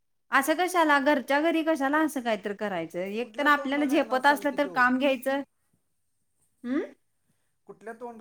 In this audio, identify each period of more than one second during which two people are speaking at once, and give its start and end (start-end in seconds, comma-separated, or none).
3.2-4.8